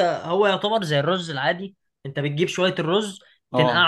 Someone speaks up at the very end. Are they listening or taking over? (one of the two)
listening